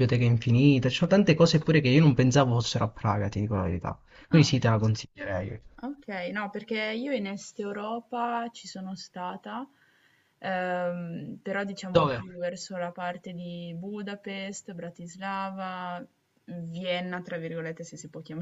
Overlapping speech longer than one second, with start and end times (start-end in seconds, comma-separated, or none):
none